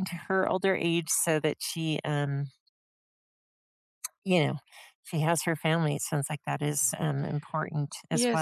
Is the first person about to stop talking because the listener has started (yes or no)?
yes